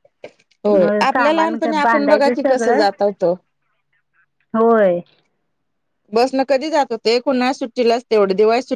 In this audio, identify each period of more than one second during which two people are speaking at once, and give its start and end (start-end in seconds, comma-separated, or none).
0.8-2.8